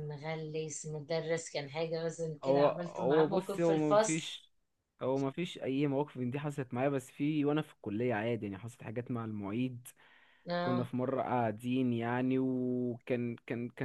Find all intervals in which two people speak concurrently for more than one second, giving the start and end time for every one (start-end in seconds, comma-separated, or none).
2.4-4.4